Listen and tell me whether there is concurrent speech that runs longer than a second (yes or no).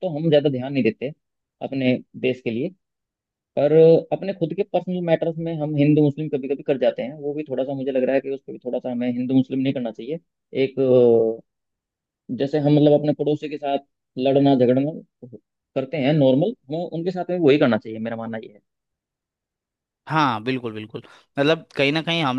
no